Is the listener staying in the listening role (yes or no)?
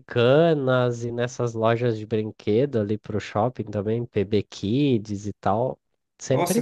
no